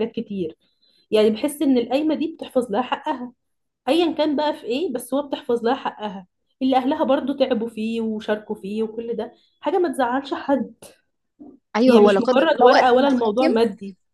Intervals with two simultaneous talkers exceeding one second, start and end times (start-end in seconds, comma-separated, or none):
11.9-13.5